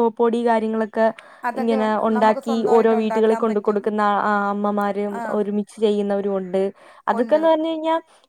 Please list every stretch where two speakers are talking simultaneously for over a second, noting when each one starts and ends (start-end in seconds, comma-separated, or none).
1.6-3.8